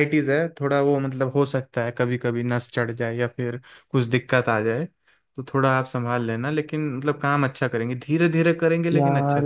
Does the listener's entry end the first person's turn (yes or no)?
yes